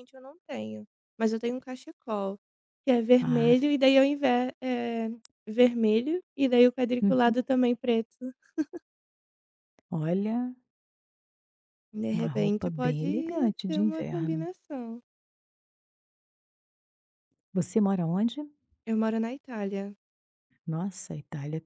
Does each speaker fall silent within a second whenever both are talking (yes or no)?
no